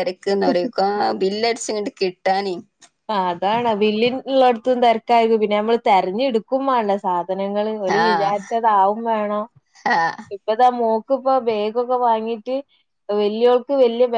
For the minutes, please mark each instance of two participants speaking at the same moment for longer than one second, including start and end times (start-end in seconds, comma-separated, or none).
none